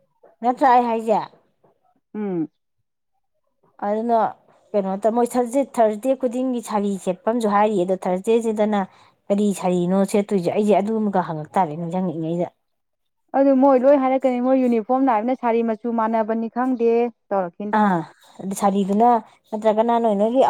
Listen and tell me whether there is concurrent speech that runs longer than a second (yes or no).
no